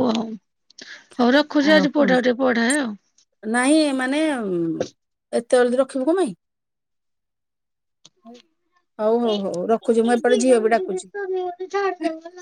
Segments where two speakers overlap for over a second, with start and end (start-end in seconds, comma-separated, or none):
9.3-11.1